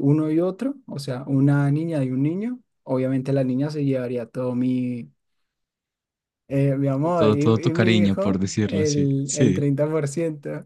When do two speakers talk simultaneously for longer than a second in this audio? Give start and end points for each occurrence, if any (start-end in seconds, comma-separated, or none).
7.0-9.7